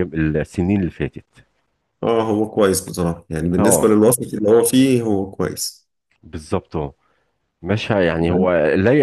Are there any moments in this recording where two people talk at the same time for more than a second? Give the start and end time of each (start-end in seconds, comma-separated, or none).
none